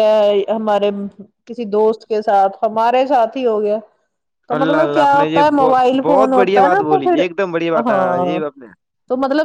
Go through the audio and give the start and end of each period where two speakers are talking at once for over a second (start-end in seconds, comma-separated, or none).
4.6-7.2